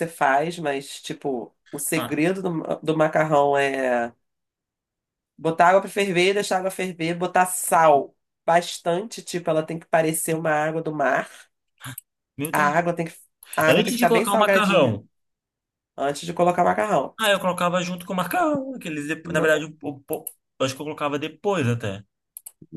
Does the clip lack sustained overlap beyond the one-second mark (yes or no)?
no